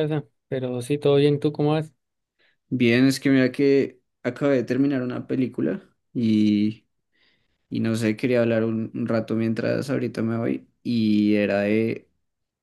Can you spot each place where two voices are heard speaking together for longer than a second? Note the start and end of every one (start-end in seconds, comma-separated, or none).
none